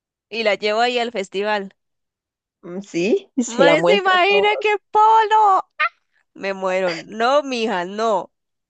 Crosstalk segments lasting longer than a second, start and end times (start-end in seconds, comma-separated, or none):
3.5-4.8